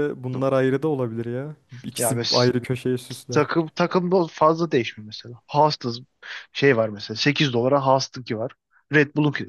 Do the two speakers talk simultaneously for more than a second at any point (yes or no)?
no